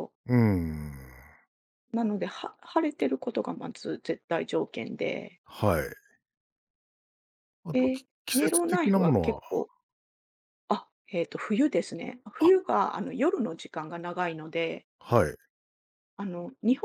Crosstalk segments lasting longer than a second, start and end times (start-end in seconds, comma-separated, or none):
7.7-9.4